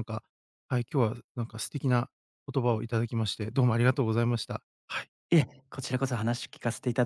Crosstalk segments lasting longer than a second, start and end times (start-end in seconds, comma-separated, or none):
none